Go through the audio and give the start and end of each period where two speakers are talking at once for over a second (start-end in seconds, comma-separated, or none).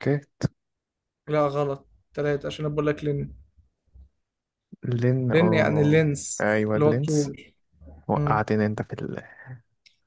5.3-7.3